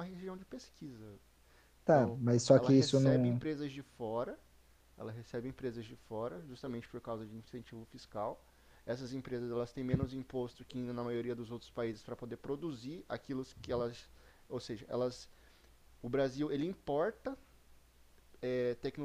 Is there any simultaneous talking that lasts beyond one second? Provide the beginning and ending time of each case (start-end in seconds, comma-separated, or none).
1.9-3.4